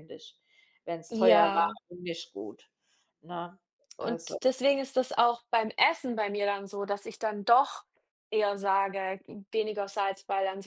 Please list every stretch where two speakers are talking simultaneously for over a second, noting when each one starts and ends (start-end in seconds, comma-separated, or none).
none